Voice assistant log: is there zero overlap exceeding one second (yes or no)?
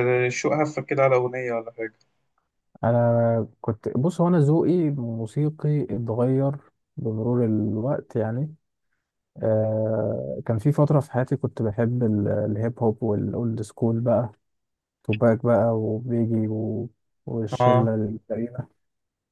yes